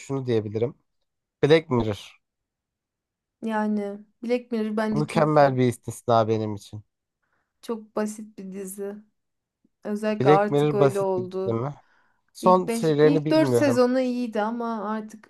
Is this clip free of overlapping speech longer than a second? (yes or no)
no